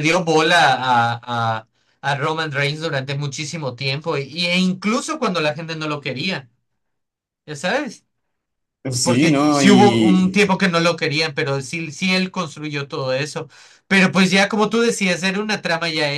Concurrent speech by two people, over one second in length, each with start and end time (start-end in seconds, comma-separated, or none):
9.0-10.6